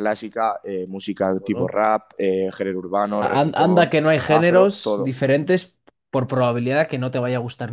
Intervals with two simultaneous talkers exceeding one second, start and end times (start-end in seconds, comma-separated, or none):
3.2-5.2